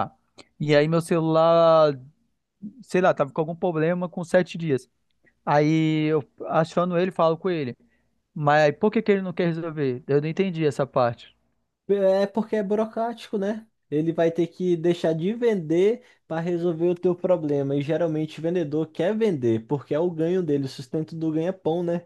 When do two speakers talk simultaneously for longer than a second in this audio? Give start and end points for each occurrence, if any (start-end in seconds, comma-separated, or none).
none